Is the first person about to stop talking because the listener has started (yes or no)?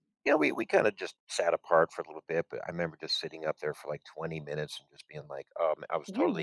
no